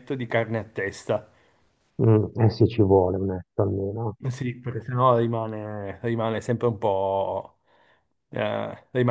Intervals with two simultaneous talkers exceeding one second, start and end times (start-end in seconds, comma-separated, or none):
none